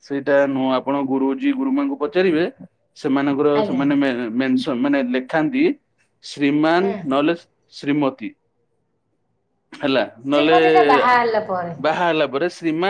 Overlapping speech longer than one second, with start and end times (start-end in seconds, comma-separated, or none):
none